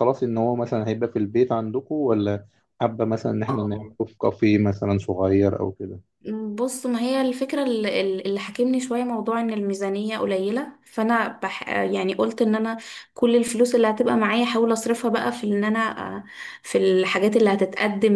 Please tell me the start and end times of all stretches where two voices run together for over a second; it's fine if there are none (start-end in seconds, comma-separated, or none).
none